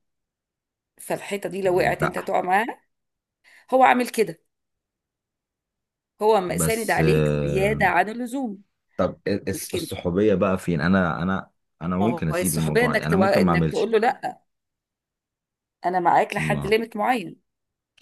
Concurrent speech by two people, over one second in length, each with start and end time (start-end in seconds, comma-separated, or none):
6.6-7.8, 12.0-13.9